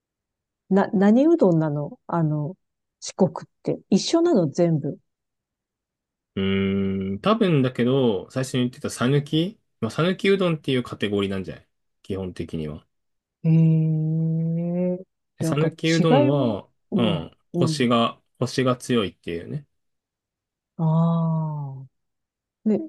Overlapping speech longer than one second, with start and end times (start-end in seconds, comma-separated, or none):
15.4-17.9